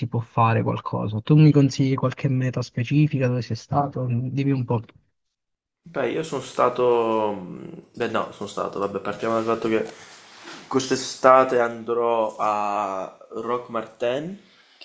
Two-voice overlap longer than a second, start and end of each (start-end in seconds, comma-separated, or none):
none